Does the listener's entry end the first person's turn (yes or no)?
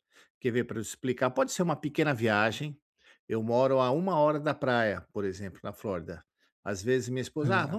no